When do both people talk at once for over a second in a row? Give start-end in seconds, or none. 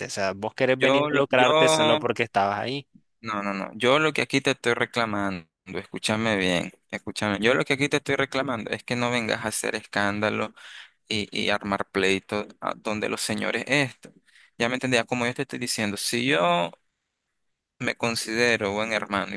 0.8-2.1